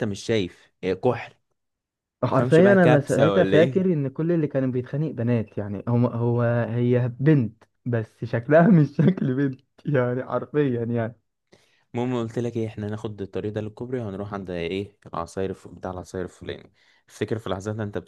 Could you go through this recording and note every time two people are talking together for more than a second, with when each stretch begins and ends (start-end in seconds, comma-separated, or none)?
2.3-3.8